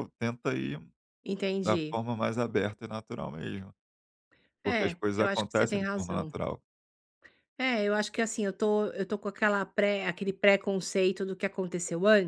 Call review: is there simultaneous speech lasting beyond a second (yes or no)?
yes